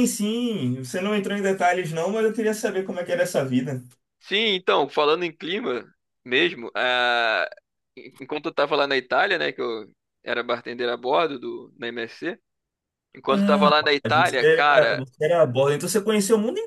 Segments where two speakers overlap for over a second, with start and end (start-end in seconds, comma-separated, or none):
13.3-15.0